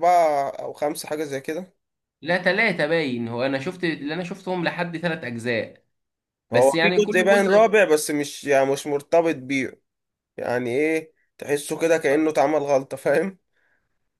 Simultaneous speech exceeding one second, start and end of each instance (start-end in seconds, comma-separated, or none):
6.5-7.8